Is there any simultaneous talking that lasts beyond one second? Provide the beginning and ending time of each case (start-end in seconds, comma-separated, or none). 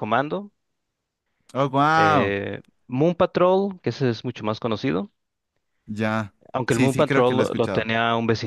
6.7-7.9